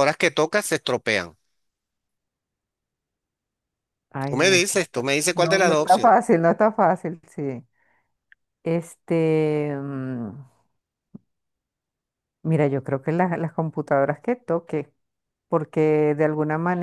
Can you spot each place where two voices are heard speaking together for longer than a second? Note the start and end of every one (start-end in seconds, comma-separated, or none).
4.2-6.2